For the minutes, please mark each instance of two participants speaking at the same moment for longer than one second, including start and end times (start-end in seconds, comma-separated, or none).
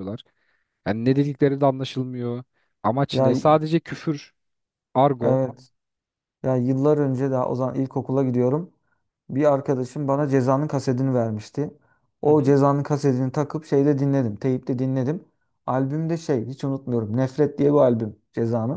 none